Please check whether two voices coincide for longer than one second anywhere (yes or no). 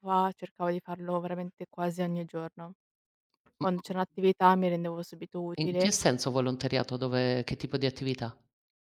no